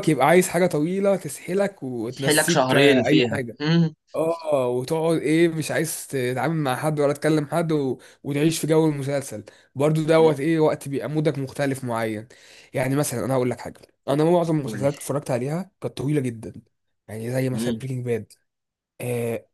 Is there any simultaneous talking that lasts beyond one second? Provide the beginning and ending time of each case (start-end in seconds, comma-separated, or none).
2.1-3.6